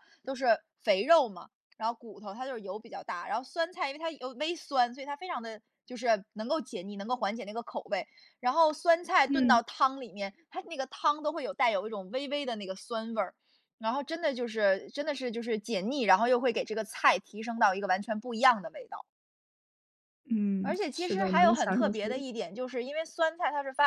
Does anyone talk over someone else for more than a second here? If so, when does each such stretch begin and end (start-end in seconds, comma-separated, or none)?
20.6-22.2